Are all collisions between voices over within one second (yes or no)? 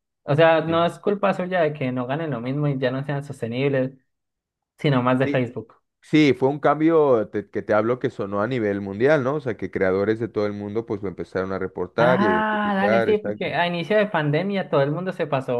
no